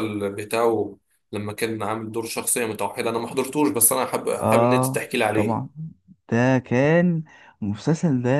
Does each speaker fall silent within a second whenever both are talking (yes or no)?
no